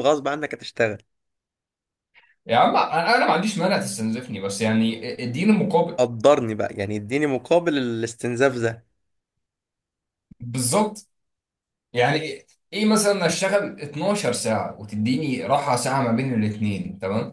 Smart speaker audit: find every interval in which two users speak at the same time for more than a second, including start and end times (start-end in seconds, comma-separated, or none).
none